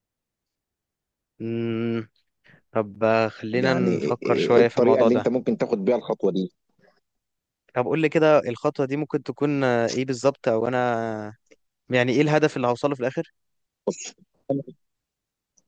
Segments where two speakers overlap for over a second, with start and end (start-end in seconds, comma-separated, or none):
3.5-5.3